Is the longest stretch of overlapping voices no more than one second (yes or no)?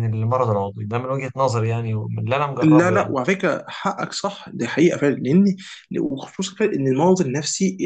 yes